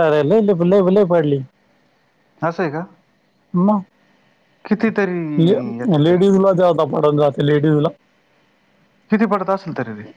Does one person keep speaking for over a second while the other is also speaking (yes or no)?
no